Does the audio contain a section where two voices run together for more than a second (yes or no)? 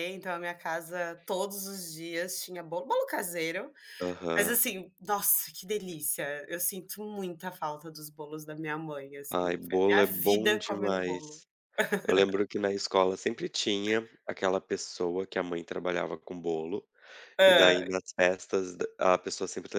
yes